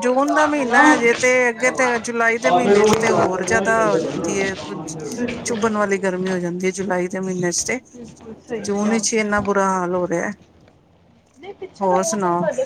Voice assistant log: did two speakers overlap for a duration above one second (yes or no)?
yes